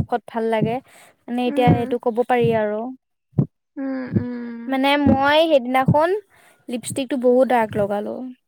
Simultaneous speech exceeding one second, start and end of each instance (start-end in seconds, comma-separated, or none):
none